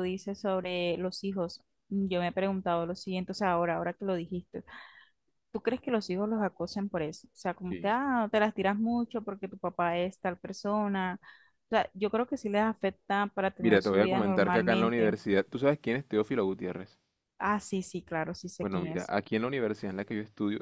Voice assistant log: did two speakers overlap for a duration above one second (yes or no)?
yes